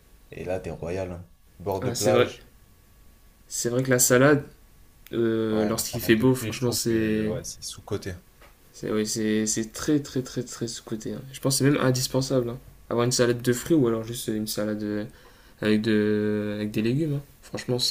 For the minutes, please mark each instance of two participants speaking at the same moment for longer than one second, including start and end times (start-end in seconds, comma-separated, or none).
5.5-7.3